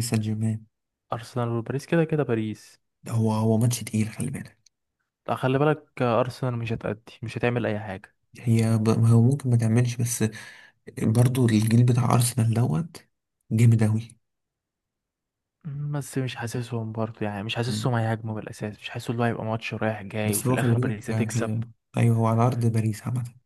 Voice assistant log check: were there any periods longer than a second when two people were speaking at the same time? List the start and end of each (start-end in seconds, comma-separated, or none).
20.2-21.5